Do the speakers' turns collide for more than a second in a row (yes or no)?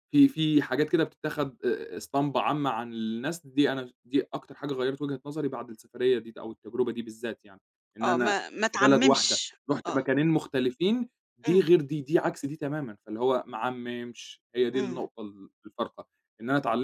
yes